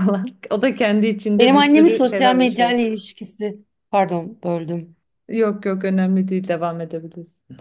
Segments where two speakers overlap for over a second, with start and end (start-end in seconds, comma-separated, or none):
1.4-2.7